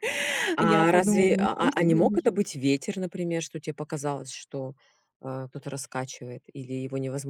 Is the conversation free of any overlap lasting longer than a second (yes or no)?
no